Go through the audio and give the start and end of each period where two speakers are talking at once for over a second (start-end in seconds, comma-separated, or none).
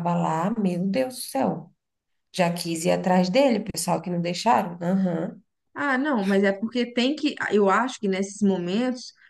none